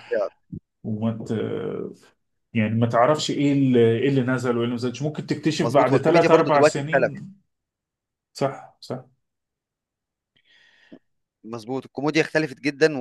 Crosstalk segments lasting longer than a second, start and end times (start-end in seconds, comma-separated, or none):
5.6-7.1